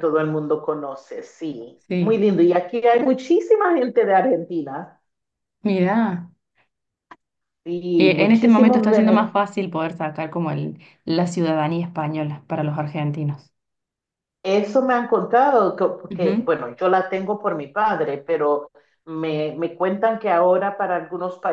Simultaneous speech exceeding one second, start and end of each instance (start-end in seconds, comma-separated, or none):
8.0-9.3